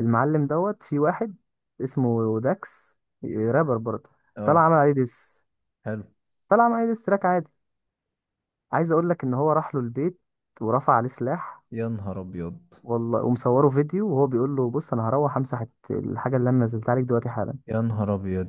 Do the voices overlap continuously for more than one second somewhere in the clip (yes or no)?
no